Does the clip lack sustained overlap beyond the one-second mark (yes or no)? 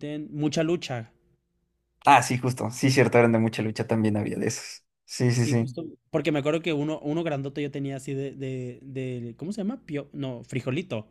yes